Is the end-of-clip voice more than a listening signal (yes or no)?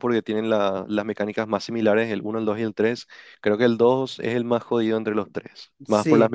yes